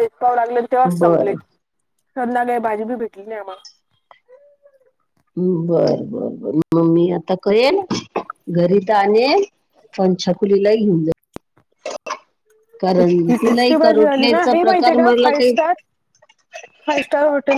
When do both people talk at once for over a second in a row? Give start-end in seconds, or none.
13.0-14.9